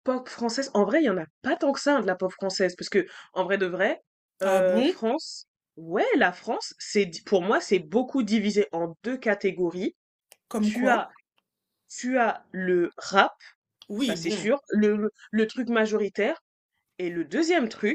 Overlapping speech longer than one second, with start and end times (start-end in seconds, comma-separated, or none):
none